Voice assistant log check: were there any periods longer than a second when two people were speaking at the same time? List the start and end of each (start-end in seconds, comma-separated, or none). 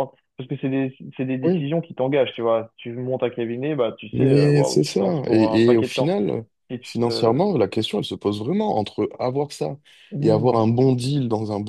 4.1-6.1